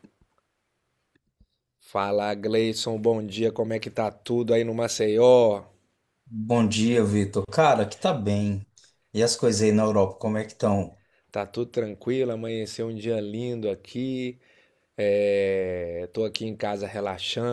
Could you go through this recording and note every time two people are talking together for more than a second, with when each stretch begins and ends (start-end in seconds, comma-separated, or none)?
none